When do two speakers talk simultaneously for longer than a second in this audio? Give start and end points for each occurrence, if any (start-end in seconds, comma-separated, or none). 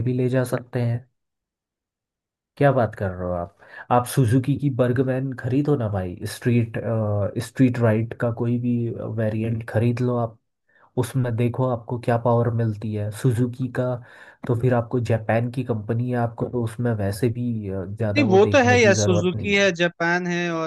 18.1-19.7